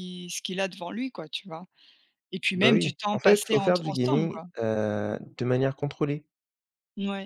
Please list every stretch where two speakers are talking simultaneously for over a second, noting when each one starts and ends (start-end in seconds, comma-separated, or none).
2.5-4.5